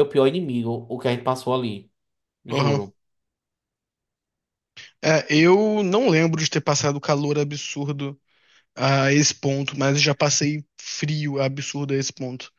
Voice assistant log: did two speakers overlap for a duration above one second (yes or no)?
no